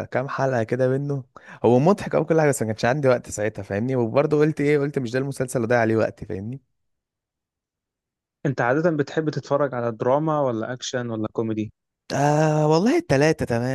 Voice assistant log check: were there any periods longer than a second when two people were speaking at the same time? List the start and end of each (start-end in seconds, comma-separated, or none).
none